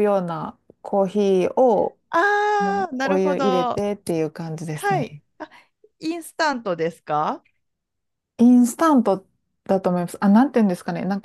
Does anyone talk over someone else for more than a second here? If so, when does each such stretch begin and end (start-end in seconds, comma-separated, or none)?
2.6-3.8